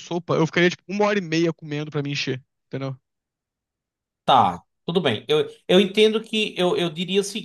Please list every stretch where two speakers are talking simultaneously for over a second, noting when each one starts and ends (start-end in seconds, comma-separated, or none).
none